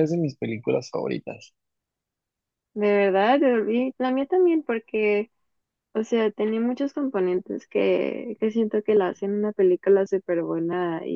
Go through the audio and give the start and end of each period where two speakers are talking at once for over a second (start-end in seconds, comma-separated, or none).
none